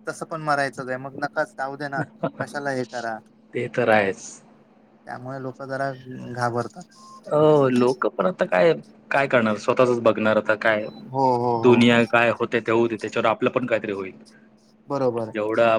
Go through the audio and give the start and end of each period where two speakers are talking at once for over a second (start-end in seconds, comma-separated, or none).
none